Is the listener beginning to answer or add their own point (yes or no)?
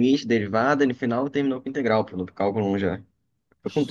yes